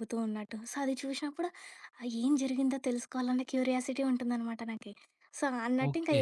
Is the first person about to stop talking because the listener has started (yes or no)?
no